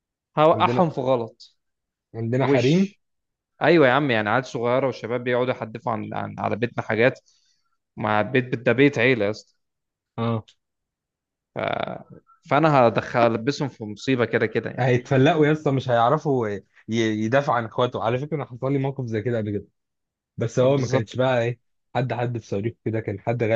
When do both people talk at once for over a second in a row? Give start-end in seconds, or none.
none